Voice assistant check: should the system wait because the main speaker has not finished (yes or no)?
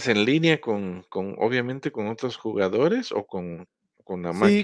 no